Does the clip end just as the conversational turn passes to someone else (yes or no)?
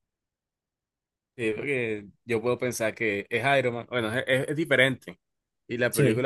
no